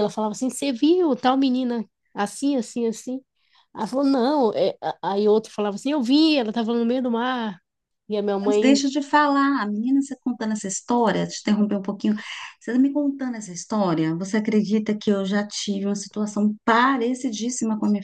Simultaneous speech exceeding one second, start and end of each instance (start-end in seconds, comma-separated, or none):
none